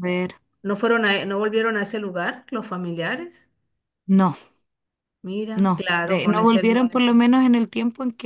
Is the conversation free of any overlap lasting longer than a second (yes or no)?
no